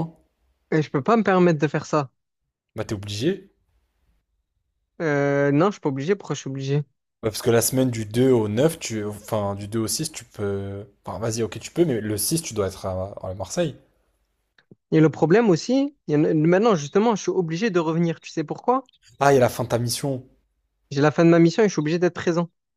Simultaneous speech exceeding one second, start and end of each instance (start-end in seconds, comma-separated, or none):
none